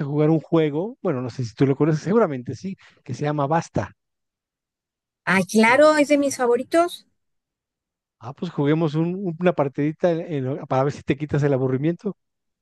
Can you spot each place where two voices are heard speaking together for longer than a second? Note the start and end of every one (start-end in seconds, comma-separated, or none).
none